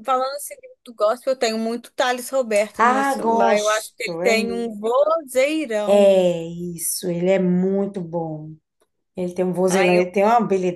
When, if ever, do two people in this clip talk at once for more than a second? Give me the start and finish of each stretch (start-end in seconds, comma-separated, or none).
2.8-4.7